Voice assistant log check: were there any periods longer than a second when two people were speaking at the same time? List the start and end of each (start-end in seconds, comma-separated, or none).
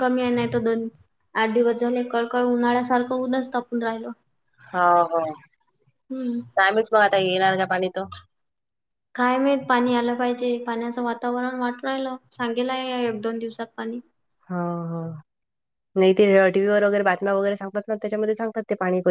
none